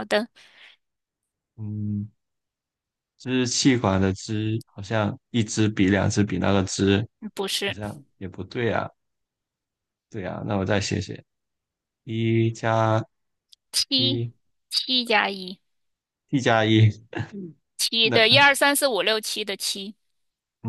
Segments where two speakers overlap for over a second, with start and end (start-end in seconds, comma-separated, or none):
none